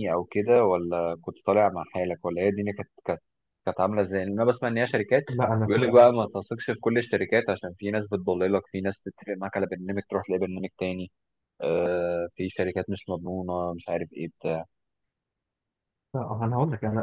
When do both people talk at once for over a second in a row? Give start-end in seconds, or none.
none